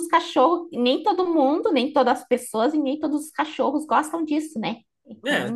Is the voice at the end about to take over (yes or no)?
yes